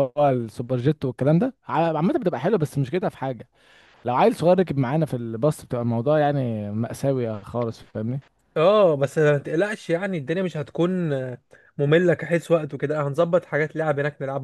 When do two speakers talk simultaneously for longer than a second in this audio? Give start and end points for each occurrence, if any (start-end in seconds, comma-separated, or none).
none